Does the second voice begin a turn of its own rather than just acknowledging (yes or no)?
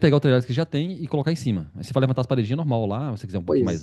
yes